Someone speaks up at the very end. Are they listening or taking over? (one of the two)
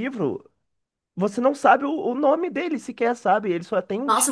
taking over